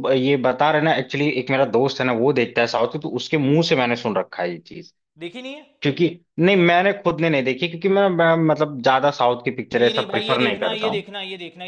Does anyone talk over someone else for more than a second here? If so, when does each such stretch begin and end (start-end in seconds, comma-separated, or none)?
9.7-11.1